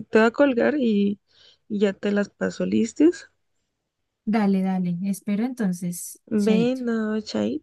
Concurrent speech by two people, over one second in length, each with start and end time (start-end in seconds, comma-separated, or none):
none